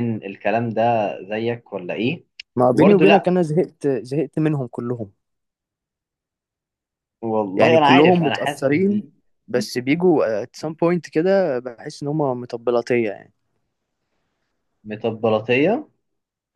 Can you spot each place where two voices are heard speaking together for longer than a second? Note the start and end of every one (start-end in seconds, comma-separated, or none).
7.6-9.0